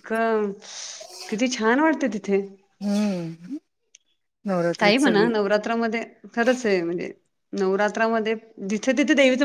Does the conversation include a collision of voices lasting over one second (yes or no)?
no